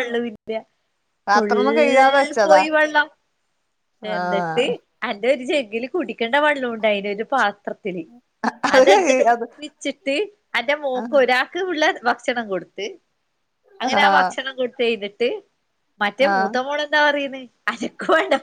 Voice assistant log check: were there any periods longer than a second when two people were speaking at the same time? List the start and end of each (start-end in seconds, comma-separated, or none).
1.3-2.6